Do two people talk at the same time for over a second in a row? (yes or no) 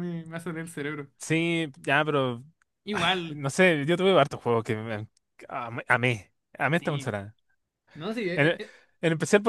no